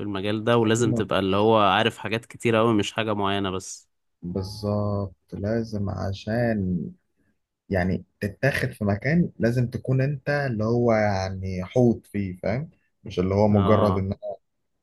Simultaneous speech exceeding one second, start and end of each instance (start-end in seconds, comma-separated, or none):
none